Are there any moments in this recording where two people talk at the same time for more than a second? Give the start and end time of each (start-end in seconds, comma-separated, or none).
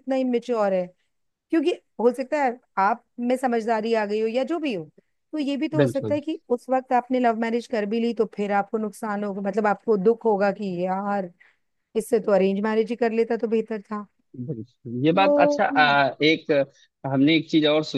none